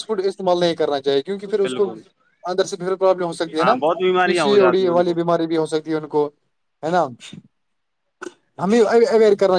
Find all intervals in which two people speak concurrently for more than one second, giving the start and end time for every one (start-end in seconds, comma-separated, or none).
3.6-5.2